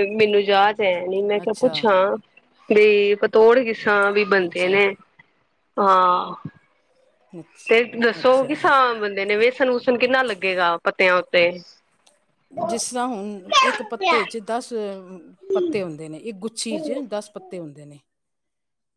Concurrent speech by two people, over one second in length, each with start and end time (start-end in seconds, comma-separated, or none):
none